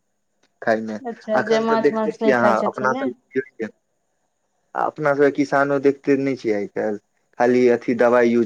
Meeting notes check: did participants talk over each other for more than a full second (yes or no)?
yes